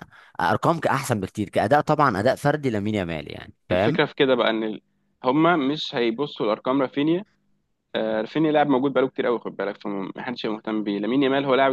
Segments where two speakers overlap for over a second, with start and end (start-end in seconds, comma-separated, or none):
none